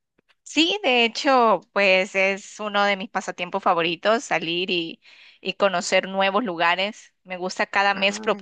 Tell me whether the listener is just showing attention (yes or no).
yes